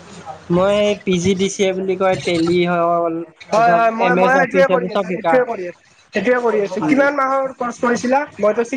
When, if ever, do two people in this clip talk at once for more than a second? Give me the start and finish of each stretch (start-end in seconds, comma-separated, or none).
3.7-5.3